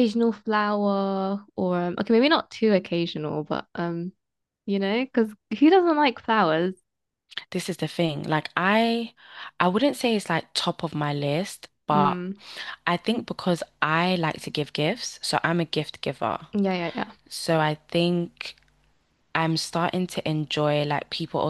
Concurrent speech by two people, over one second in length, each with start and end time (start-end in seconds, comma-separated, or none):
none